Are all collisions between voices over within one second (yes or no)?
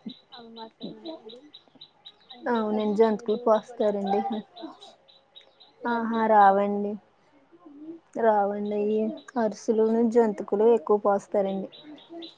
no